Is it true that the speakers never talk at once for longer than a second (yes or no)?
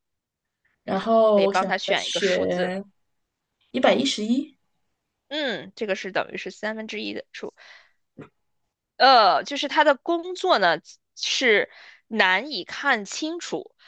no